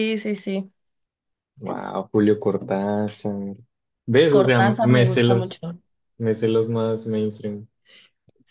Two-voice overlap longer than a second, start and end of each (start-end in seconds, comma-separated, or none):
4.3-5.7